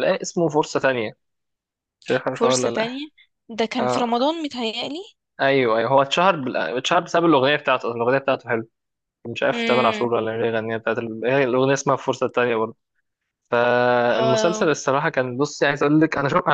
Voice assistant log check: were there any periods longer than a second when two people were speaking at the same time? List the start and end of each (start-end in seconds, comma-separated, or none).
none